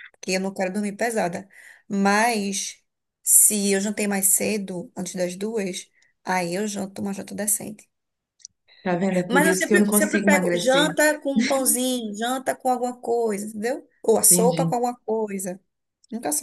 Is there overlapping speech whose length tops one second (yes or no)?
yes